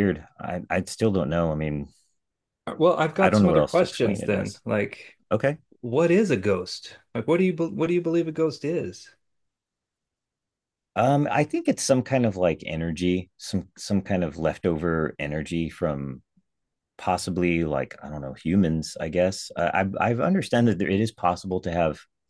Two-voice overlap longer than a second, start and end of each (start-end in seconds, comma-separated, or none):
3.2-4.6